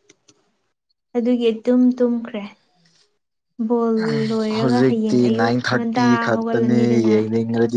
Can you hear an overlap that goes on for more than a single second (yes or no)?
yes